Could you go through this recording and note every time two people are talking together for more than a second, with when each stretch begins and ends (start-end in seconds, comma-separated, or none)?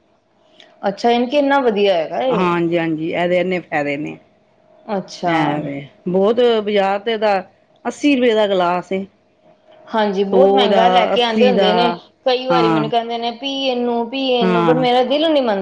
10.3-11.7